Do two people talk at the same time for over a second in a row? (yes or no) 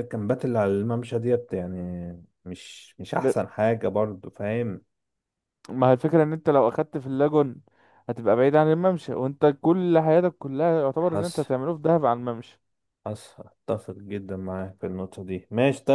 no